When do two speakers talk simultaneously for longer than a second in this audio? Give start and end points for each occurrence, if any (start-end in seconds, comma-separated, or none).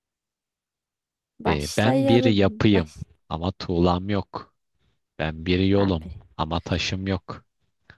1.5-2.9